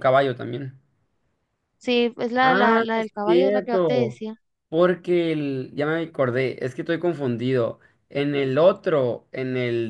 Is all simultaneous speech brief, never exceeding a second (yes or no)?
no